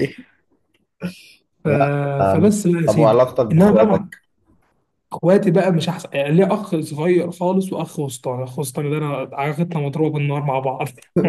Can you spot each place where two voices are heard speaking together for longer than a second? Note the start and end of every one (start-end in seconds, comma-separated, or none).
2.3-4.1